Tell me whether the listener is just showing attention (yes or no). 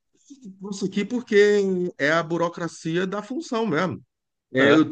yes